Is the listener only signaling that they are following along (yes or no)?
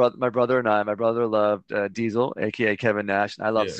yes